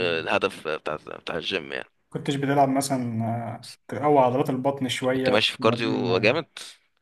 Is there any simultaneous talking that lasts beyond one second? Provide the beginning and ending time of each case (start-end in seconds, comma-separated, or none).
5.1-6.4